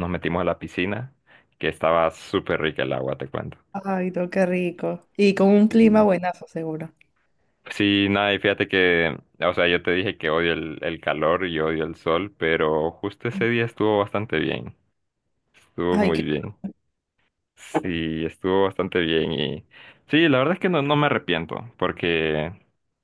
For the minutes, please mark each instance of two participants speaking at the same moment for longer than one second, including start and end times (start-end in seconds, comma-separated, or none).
none